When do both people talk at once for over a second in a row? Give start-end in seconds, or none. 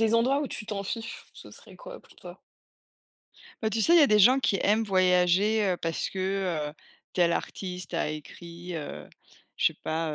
none